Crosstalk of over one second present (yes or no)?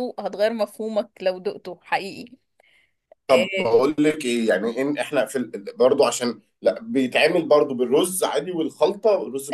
no